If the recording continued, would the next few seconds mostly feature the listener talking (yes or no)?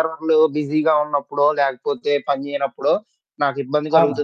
no